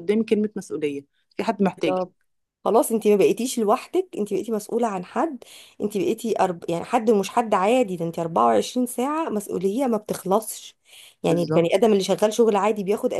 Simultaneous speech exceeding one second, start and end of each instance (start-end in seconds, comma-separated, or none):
none